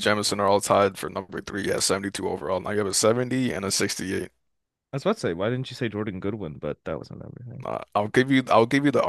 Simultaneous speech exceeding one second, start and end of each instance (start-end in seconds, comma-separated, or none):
none